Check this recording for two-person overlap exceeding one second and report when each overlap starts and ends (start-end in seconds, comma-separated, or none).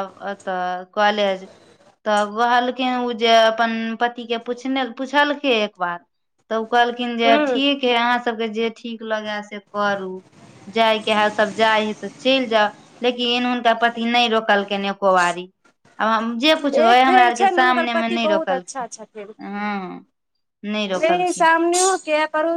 16.8-18.9